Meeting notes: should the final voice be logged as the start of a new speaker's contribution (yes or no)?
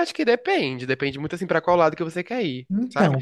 no